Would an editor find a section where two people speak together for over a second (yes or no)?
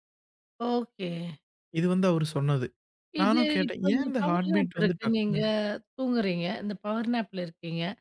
yes